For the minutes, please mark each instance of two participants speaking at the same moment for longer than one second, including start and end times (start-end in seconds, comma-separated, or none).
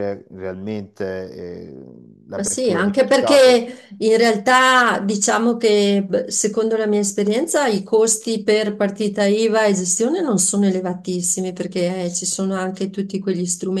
2.4-3.7